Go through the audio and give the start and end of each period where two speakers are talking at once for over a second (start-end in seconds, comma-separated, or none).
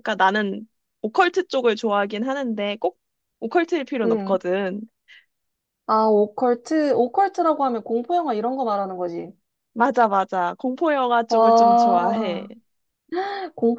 11.3-12.5